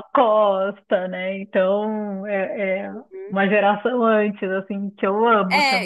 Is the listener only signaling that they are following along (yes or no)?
no